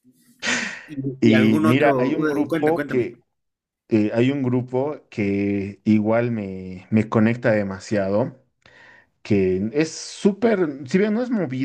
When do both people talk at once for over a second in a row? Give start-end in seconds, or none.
1.2-3.1